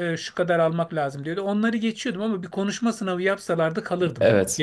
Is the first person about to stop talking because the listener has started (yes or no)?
yes